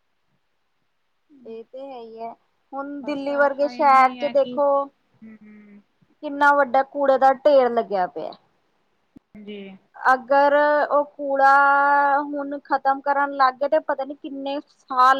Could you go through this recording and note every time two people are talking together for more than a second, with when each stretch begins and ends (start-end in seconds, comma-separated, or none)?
3.0-4.6